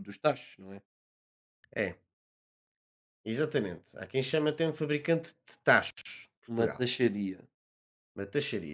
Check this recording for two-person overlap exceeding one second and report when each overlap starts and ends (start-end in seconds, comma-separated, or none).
none